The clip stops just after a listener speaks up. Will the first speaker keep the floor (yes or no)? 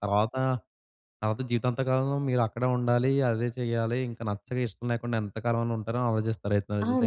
no